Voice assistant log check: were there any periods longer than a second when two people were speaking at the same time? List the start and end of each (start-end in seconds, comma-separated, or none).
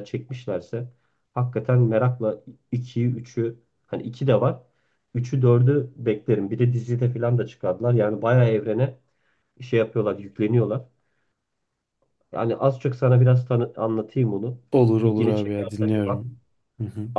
15.0-16.3